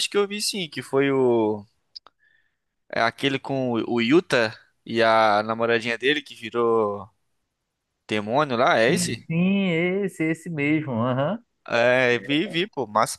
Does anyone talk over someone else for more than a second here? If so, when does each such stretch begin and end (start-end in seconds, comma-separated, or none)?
none